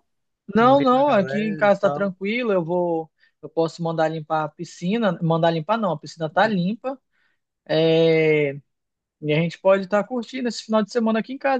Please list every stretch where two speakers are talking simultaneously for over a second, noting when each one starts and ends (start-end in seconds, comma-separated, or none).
0.6-2.1